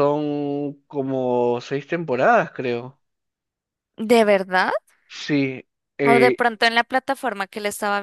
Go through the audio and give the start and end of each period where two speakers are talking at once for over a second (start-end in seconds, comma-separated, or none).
none